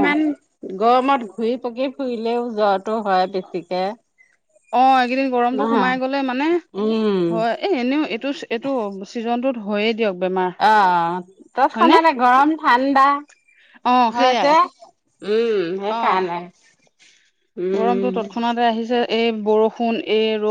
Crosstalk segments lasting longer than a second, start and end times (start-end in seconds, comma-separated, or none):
none